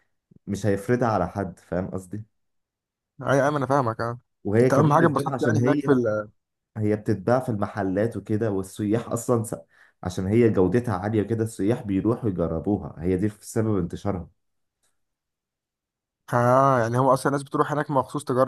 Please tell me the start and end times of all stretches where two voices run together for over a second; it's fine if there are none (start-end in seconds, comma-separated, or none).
4.6-5.9